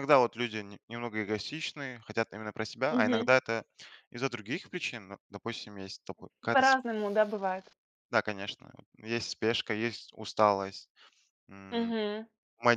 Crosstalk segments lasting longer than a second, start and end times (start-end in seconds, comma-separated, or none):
none